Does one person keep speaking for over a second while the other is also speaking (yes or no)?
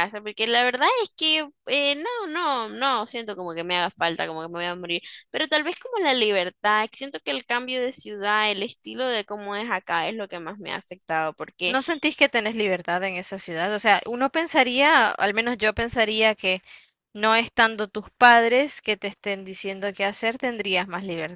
no